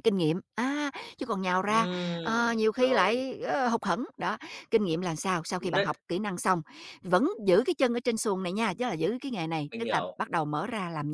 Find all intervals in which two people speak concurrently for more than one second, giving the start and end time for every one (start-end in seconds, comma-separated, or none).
1.6-3.3